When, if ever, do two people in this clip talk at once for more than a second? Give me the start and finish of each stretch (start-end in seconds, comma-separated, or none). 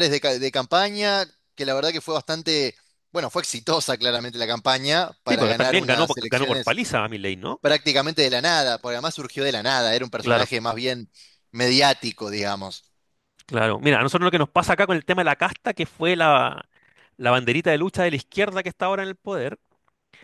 5.3-6.8